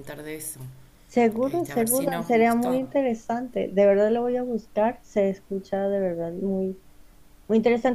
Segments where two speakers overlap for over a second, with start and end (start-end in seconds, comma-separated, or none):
1.4-2.8